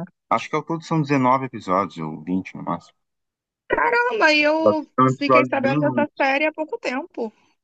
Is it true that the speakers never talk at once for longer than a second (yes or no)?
no